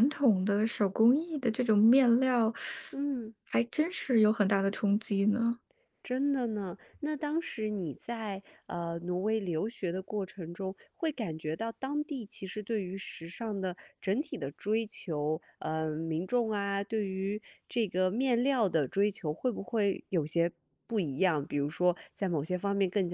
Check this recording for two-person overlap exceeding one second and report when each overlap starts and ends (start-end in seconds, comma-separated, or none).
none